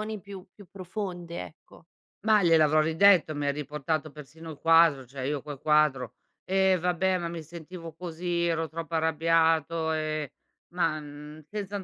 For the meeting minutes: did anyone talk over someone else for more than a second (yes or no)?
no